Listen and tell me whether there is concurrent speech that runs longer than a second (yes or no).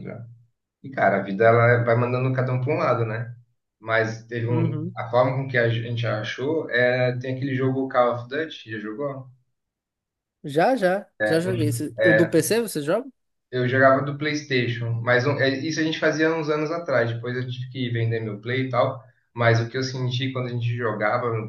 no